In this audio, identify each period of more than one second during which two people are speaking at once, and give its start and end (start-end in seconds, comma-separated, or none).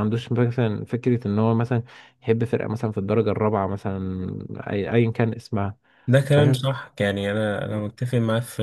none